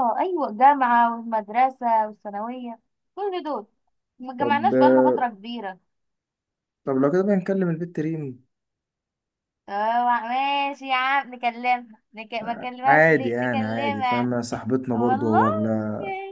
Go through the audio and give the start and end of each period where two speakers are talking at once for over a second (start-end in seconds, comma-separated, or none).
12.9-14.3